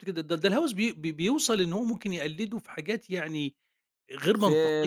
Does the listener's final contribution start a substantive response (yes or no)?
yes